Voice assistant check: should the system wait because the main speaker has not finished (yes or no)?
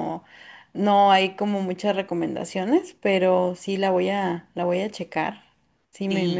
no